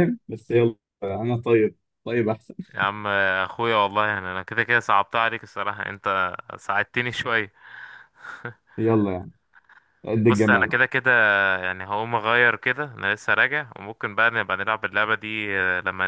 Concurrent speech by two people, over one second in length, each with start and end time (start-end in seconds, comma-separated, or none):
none